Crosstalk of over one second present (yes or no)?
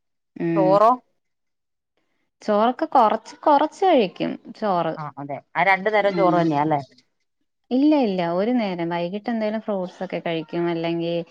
no